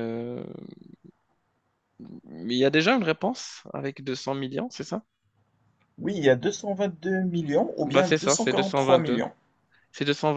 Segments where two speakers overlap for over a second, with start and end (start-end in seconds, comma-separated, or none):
7.8-9.2